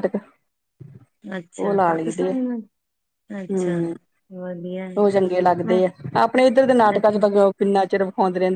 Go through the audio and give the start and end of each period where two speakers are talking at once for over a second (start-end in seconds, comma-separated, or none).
none